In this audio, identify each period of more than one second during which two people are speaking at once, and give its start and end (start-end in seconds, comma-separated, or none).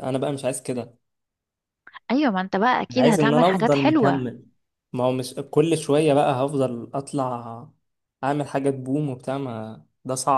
2.9-4.2